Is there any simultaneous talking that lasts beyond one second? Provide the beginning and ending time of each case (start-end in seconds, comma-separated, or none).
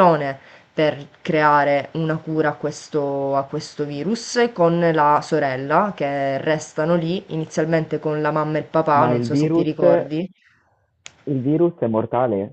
8.9-10.2